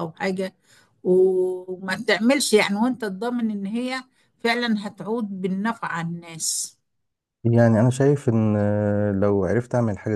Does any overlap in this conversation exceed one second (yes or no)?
no